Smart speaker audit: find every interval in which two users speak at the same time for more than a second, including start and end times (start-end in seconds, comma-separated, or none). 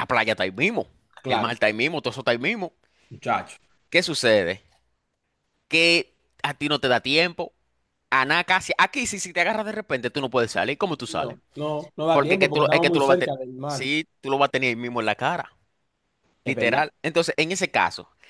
12.1-13.9